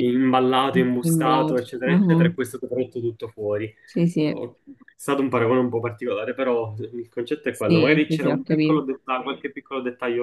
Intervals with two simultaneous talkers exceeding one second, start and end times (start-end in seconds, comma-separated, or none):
1.0-2.4, 7.5-8.9